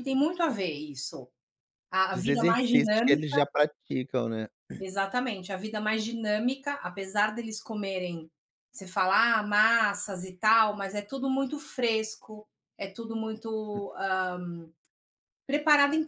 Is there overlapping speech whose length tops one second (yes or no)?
yes